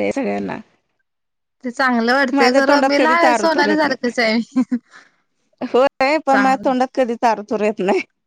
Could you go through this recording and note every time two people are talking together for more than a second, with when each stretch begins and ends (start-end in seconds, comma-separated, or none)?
2.4-4.1